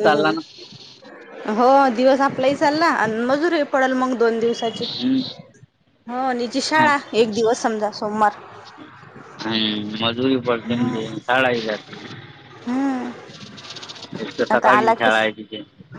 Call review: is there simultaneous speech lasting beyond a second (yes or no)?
no